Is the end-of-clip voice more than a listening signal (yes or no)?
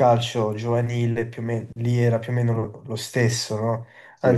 no